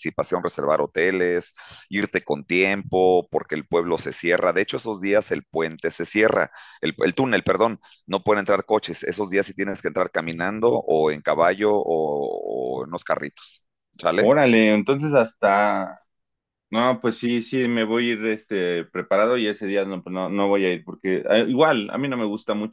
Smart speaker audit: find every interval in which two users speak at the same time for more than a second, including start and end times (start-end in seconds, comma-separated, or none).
none